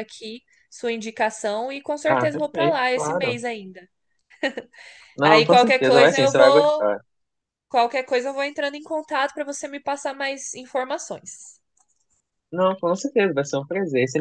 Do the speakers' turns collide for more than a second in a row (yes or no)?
yes